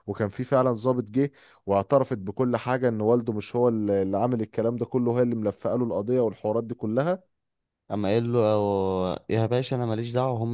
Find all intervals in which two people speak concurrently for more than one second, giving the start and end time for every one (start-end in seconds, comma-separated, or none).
none